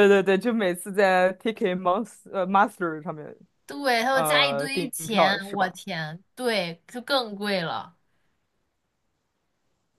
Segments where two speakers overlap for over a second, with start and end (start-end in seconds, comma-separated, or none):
4.1-5.8